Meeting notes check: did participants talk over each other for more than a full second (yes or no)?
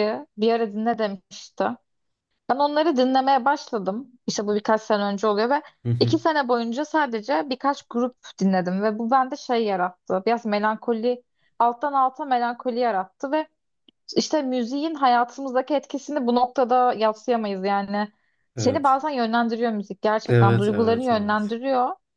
yes